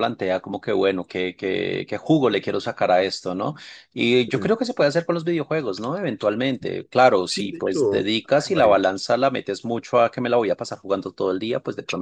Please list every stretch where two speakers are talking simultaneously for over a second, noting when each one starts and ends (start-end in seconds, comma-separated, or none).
7.2-8.9